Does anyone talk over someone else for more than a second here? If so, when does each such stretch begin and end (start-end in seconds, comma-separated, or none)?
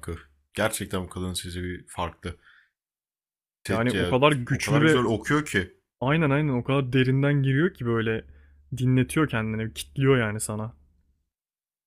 3.7-5.0